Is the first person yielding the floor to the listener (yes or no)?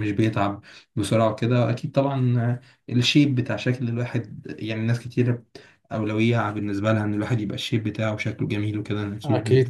yes